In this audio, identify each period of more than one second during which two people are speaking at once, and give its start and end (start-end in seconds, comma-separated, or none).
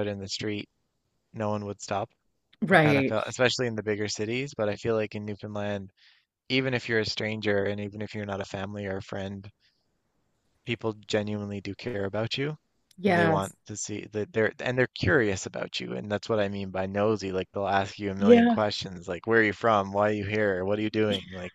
none